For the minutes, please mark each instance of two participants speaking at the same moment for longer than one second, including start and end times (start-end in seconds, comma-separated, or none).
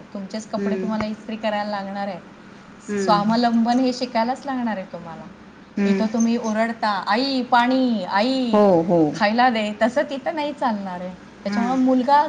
none